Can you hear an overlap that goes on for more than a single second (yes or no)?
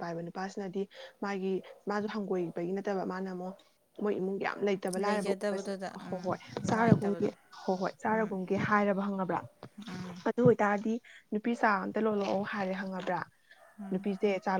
yes